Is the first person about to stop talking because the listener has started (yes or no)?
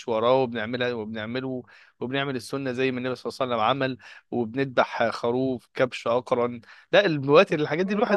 no